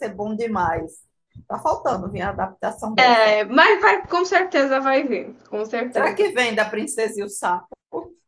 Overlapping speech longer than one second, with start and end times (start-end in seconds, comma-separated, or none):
none